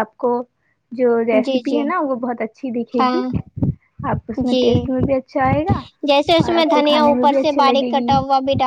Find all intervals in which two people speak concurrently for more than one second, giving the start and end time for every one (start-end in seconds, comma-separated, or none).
6.5-8.2